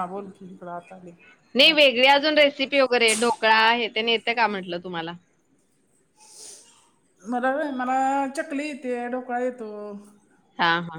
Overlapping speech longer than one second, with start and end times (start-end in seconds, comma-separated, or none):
none